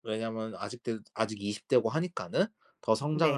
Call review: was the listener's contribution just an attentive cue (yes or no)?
yes